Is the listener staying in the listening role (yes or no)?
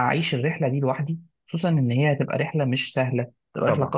yes